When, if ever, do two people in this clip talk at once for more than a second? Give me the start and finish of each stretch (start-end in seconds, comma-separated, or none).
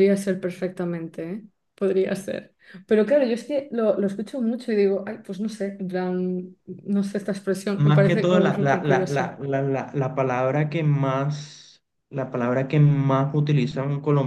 7.8-9.3